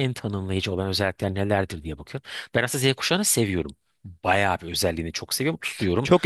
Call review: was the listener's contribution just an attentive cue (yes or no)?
no